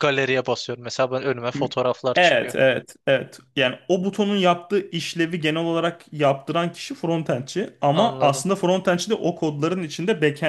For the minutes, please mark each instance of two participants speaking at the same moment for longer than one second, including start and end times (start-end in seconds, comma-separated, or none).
none